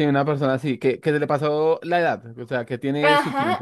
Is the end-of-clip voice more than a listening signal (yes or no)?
yes